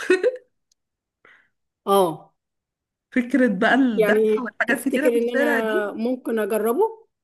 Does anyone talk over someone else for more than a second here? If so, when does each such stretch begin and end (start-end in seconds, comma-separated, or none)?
4.0-5.9